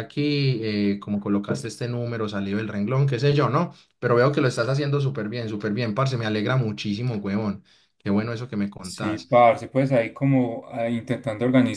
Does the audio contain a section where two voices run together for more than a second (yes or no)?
no